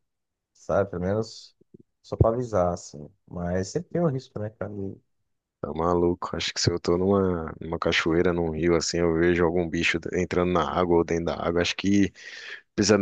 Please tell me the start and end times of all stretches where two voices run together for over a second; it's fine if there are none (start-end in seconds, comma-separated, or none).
none